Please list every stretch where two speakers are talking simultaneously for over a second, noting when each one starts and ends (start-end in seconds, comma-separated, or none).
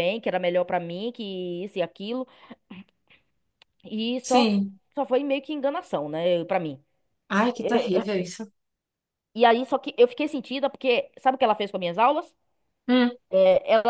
none